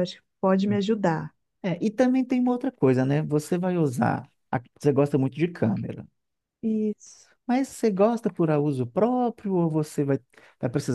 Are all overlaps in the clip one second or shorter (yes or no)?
yes